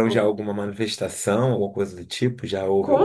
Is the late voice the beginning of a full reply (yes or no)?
yes